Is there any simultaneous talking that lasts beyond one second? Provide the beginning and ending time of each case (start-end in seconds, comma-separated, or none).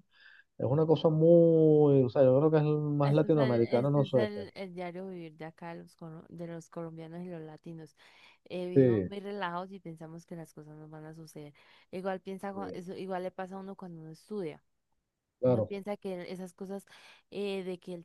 3.0-4.4